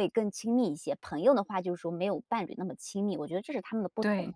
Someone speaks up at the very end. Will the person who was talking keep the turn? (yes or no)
yes